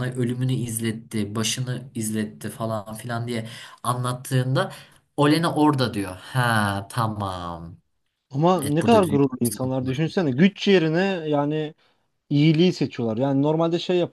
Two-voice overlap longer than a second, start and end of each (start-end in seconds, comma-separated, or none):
8.6-10.1